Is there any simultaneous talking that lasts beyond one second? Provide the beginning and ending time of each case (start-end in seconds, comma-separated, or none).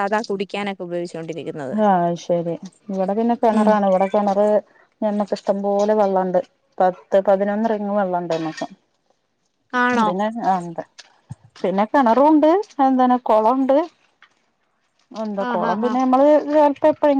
none